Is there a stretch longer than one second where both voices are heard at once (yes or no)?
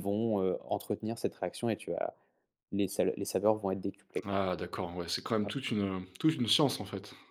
no